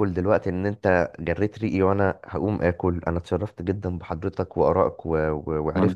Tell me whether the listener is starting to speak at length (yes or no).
no